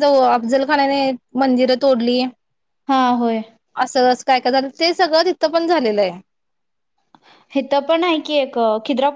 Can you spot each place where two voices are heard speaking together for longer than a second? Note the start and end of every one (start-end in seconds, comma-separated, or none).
none